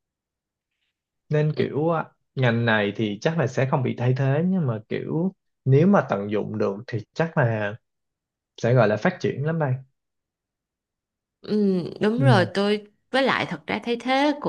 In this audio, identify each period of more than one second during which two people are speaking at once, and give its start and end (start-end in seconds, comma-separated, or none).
none